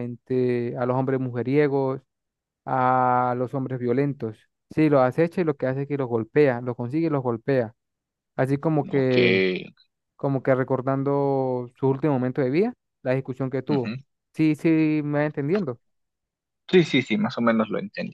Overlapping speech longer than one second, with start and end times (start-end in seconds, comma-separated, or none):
none